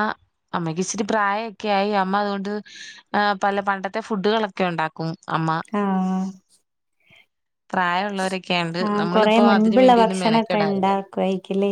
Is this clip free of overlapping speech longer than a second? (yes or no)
no